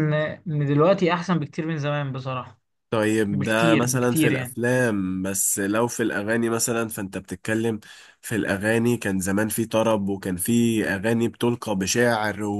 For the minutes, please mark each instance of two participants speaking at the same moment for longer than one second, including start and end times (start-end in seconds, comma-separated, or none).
3.3-4.6